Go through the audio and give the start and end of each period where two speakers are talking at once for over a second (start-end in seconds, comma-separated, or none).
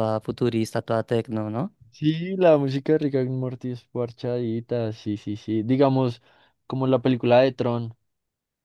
none